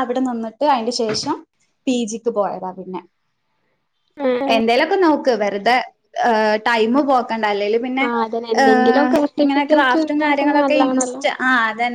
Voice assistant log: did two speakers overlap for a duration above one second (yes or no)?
yes